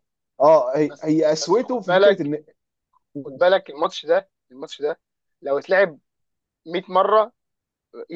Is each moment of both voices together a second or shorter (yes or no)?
no